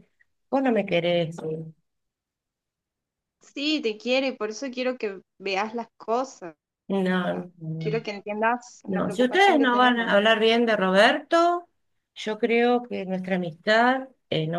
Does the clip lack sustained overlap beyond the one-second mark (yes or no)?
no